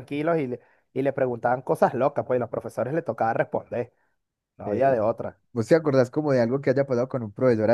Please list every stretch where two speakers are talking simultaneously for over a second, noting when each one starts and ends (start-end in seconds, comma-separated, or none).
none